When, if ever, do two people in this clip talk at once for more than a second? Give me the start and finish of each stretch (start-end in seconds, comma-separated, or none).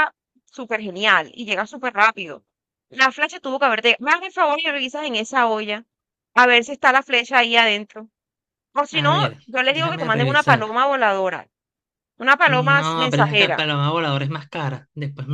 8.9-10.7, 12.5-13.7